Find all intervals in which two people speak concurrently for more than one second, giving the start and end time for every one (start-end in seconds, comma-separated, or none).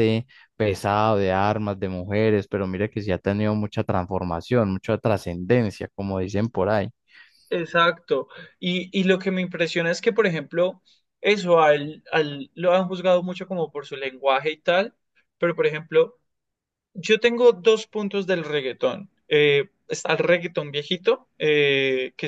none